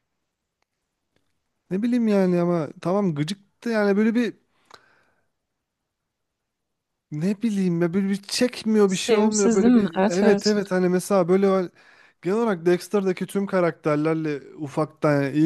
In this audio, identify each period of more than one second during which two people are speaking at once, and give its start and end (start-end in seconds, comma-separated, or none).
8.9-10.4